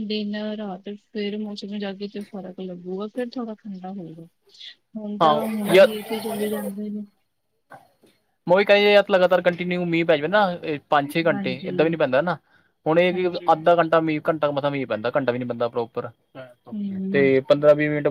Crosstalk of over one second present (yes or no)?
no